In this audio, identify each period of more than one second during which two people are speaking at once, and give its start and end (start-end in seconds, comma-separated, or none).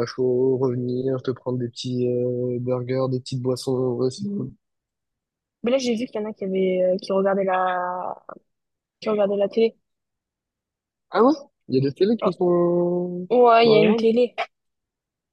none